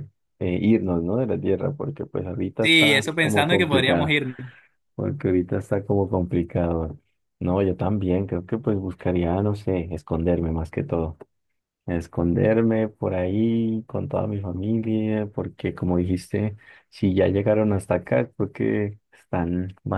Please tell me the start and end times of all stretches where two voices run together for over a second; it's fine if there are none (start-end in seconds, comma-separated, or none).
2.6-4.1